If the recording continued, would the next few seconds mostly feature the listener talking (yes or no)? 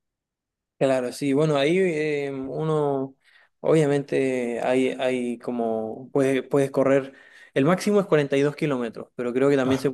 no